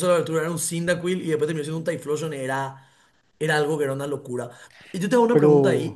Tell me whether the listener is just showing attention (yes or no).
yes